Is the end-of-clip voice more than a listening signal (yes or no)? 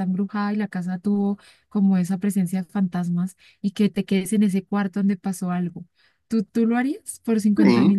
yes